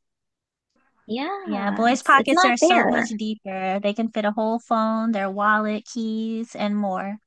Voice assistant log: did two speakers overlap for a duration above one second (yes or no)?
yes